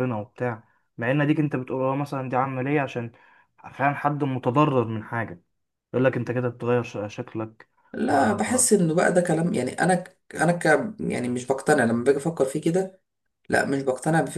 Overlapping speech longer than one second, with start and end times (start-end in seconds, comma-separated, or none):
none